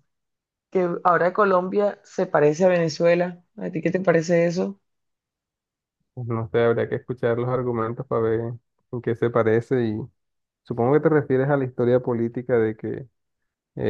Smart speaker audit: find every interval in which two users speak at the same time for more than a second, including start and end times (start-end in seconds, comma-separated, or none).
none